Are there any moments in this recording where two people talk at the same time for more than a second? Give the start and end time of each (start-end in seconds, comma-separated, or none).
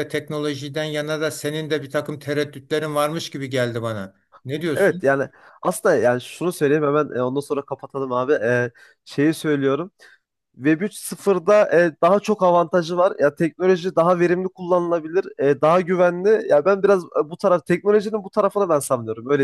none